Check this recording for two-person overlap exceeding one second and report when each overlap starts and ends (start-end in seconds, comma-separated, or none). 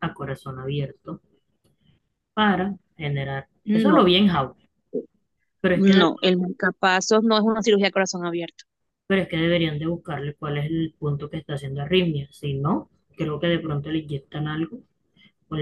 none